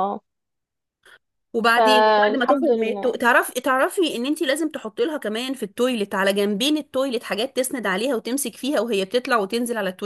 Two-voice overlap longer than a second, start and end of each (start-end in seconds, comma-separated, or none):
1.8-3.1